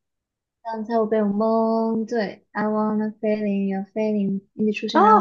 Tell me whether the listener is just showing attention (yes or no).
no